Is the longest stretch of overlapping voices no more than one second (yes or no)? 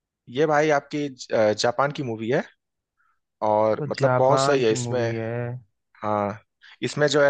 no